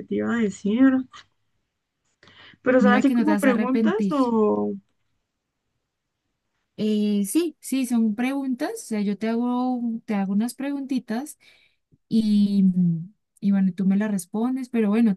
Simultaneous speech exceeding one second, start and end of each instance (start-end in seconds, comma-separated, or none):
2.8-4.1